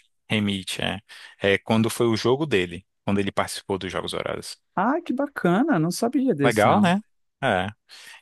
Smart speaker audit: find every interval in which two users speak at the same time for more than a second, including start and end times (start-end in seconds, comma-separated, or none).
none